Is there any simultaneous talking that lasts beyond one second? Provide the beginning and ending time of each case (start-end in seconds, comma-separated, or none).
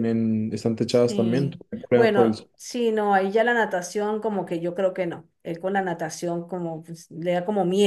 0.8-2.5